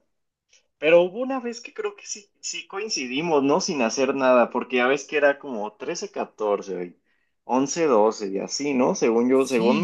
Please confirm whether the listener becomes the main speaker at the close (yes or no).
yes